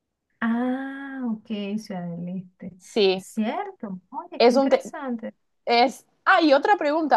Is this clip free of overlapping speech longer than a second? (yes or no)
yes